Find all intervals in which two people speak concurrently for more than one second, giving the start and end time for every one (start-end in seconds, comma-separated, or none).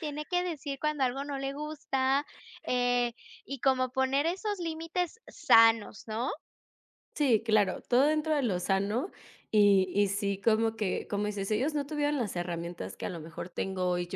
none